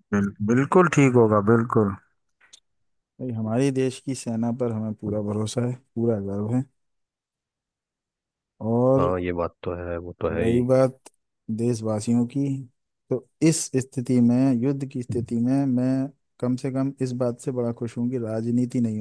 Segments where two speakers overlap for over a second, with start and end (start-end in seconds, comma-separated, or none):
none